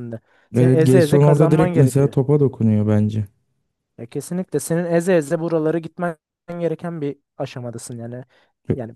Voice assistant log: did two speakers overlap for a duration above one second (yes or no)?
yes